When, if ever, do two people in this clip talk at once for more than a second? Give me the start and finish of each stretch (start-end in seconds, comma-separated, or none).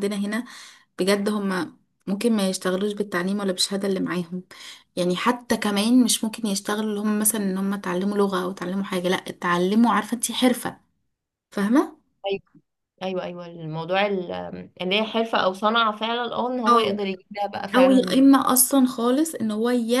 none